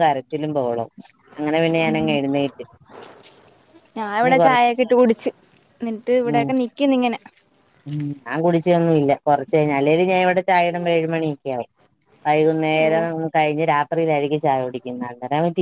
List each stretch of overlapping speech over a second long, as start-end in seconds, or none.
none